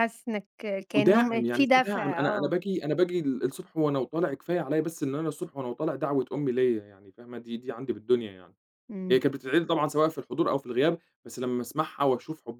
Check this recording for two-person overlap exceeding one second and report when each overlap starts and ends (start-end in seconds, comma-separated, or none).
0.9-2.5